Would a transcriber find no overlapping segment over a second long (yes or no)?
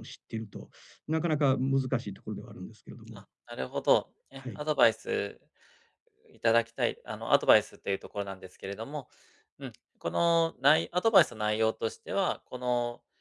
yes